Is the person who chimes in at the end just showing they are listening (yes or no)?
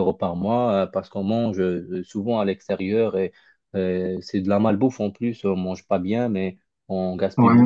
yes